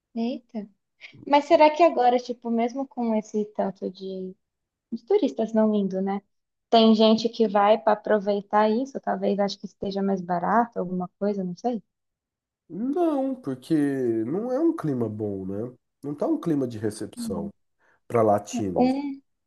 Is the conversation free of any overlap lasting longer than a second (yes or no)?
yes